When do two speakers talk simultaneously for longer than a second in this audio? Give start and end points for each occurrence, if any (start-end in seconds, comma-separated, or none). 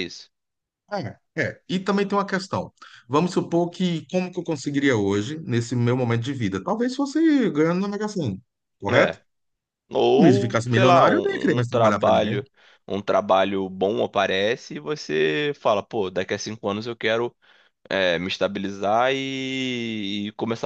10.2-12.4